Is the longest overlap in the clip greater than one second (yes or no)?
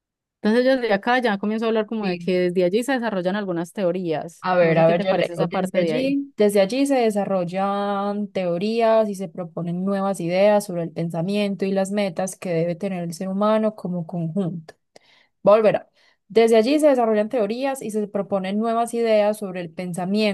yes